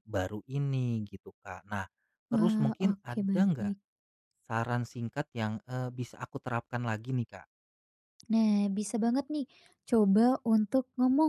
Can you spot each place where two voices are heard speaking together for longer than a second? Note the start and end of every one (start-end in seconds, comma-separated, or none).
2.3-3.7